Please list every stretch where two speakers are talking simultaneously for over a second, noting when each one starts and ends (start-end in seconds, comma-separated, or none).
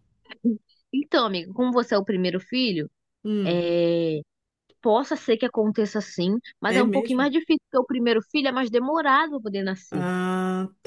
none